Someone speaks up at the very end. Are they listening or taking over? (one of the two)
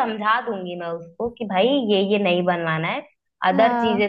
listening